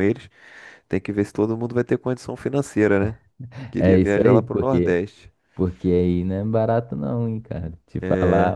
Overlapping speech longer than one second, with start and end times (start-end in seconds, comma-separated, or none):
3.8-5.0